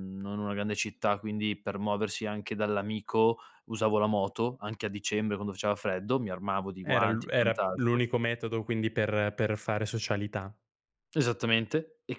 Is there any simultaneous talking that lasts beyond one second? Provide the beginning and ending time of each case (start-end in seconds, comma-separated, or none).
6.8-8.1